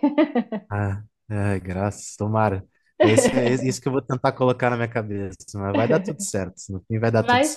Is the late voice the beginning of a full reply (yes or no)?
yes